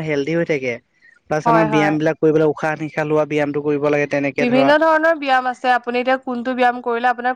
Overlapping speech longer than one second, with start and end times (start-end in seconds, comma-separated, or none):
none